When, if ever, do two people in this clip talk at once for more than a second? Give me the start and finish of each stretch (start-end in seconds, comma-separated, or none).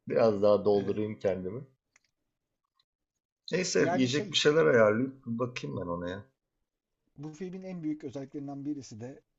none